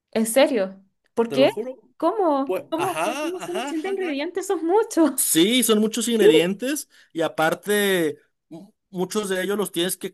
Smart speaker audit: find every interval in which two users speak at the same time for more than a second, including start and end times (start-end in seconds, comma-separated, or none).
2.5-4.2